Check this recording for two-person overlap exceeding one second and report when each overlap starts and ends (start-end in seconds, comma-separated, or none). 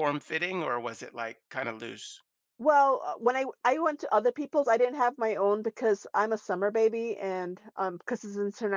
none